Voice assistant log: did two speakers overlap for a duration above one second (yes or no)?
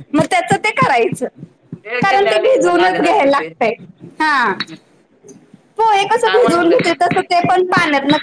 yes